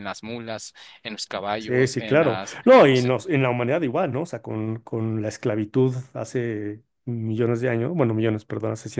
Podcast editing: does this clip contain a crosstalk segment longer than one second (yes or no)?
yes